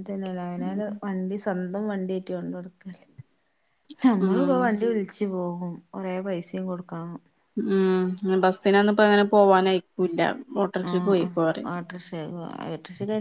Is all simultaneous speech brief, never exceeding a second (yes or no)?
yes